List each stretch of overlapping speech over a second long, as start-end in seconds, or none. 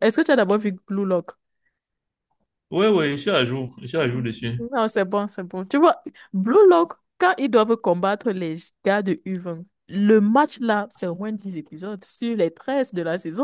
none